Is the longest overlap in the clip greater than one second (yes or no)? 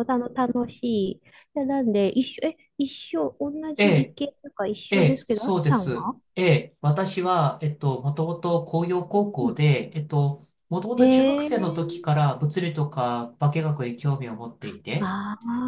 yes